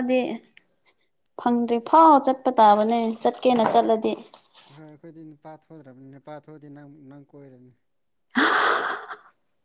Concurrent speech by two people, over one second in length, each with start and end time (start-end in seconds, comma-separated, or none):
none